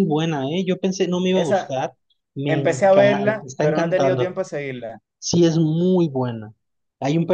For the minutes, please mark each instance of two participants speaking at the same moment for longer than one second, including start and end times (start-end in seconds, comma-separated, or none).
2.5-4.4